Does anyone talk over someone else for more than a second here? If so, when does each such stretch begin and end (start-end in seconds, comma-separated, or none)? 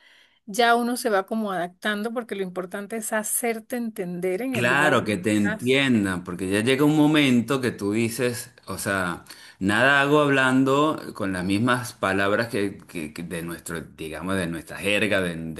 4.5-5.8